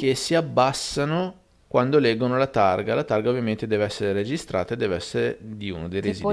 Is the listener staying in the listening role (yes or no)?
no